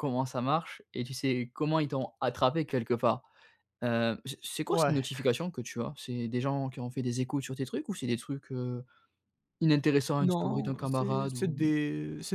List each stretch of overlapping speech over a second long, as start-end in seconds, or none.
10.2-11.5